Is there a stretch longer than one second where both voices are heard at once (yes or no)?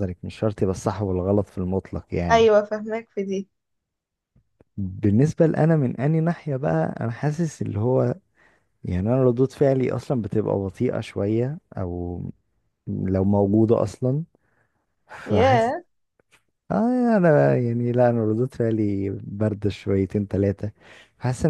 no